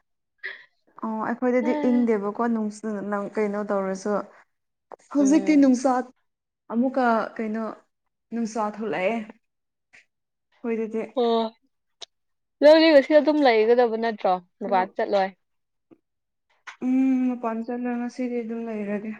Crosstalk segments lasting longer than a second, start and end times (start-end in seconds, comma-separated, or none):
none